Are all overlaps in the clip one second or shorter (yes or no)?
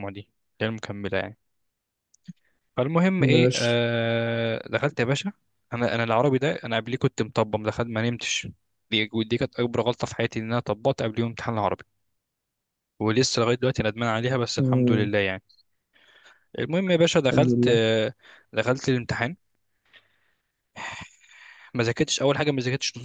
yes